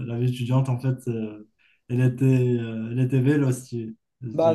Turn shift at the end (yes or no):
yes